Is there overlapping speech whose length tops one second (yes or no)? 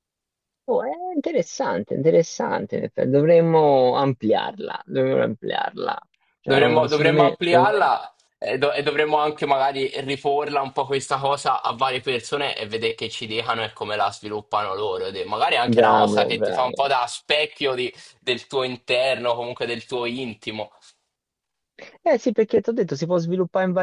yes